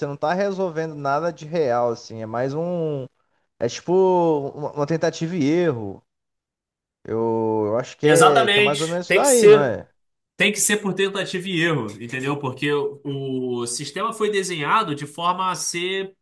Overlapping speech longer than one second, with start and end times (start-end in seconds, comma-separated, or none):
8.0-9.8